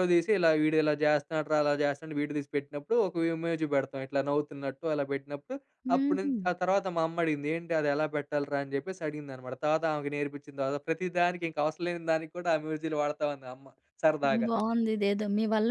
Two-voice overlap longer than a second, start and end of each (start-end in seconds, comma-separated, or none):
none